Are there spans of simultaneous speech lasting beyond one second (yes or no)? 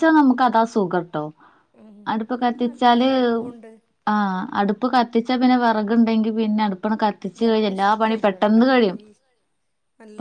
yes